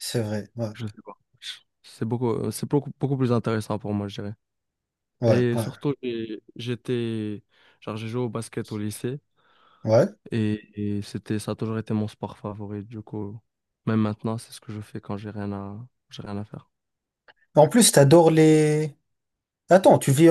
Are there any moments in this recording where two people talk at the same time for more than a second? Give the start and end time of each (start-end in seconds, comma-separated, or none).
none